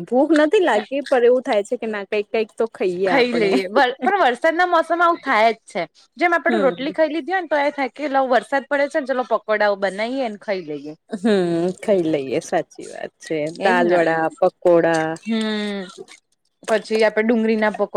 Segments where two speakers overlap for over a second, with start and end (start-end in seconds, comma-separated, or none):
none